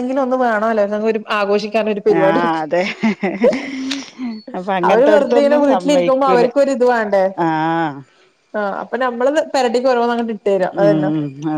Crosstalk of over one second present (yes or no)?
yes